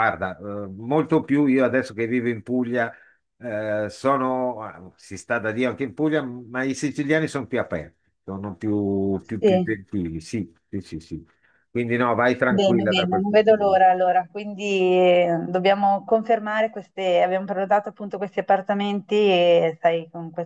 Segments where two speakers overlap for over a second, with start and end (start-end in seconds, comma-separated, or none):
12.5-13.8